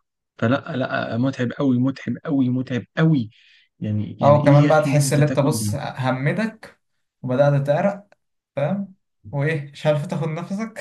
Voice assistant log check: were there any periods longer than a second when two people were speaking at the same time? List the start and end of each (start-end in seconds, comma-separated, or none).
4.2-5.7